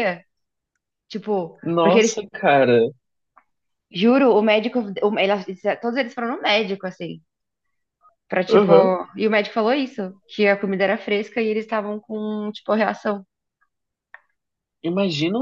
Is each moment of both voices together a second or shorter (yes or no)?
yes